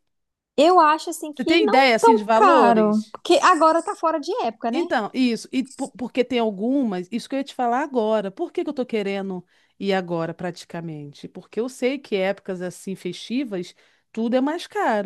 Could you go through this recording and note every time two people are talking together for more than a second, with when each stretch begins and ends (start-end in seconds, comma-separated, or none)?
1.3-3.1